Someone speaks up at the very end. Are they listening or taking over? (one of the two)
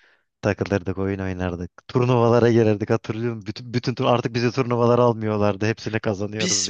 taking over